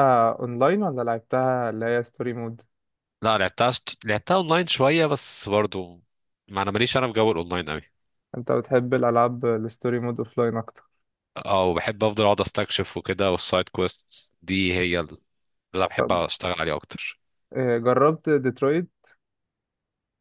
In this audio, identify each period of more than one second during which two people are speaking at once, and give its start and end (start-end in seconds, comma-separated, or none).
none